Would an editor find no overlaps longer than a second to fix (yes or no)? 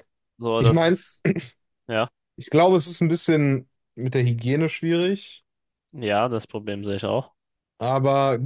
yes